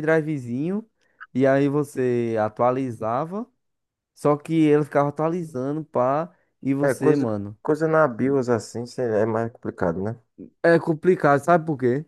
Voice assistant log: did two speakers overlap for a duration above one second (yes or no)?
no